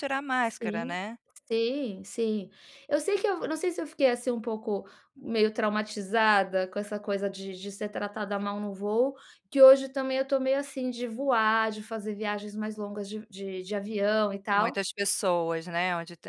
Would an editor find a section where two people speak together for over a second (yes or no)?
no